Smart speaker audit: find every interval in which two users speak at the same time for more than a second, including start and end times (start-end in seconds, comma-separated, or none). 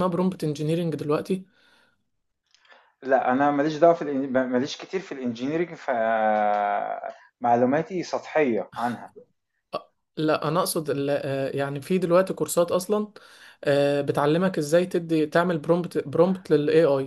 none